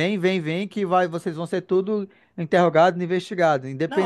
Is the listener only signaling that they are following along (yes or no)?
no